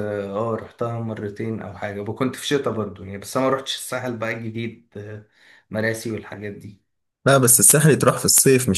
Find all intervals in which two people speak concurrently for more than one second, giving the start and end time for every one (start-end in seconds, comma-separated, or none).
none